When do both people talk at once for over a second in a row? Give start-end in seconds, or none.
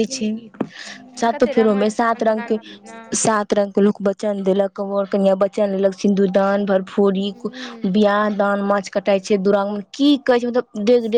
1.3-3.0